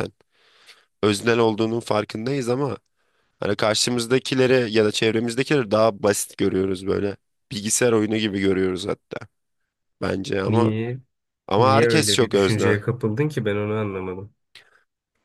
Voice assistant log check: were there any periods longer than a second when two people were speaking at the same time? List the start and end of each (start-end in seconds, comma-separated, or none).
11.6-12.8